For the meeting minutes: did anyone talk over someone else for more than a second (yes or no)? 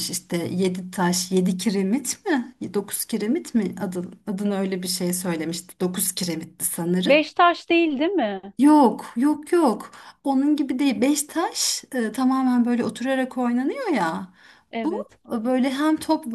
no